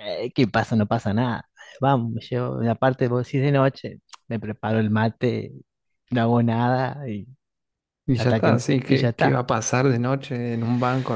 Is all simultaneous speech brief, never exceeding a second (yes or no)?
no